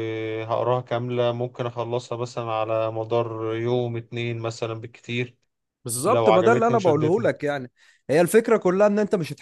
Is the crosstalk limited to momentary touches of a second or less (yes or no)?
no